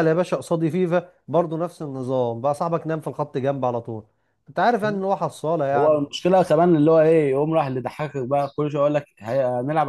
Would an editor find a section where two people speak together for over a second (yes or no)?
no